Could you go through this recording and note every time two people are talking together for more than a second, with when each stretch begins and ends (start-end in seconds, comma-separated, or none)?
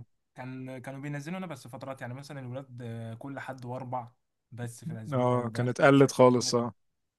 5.1-6.5